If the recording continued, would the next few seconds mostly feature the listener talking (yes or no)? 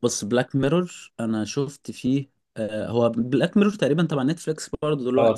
yes